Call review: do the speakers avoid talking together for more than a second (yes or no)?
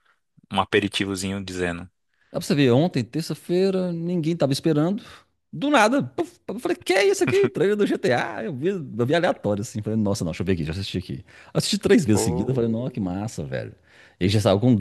yes